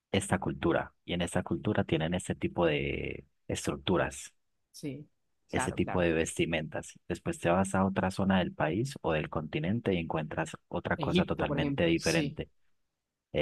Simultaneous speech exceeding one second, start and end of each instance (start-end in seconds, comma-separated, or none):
11.0-12.4